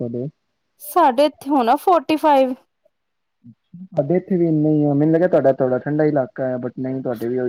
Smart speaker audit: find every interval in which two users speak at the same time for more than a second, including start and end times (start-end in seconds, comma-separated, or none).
none